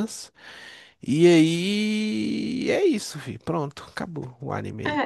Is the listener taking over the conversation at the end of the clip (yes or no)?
yes